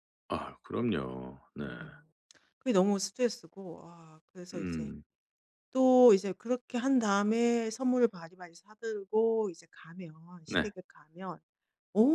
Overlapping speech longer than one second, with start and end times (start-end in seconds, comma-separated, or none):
none